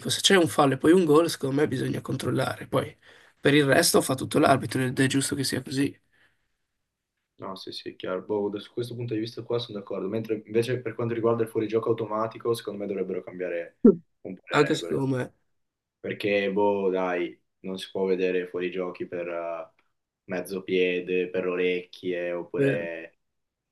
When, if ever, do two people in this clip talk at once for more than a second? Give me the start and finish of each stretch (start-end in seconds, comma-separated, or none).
none